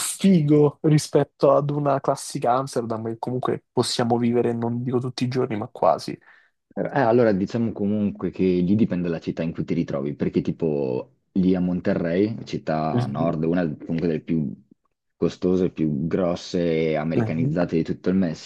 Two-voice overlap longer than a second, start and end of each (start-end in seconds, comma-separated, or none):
none